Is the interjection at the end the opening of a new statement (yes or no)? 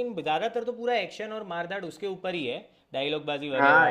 yes